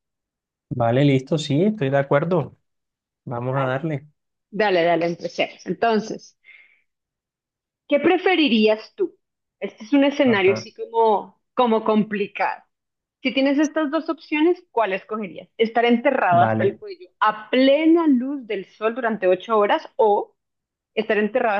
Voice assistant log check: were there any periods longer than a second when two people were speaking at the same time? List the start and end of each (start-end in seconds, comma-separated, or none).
none